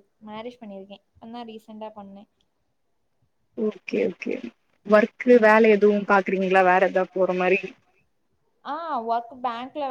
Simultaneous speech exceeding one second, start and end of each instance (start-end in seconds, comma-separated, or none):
none